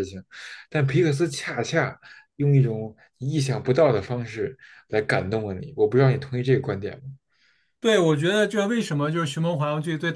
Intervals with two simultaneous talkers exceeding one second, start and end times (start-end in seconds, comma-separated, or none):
none